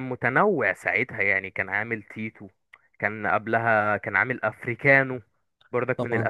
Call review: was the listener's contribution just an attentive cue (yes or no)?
yes